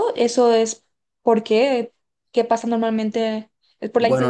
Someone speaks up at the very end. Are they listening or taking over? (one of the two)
taking over